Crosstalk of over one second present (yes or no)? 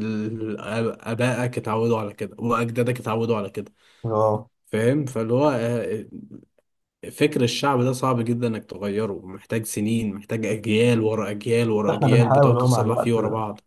yes